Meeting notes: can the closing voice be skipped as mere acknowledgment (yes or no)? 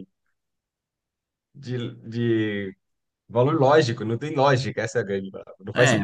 no